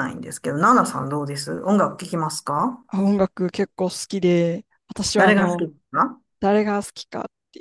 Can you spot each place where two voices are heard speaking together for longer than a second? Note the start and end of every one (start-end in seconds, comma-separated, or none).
none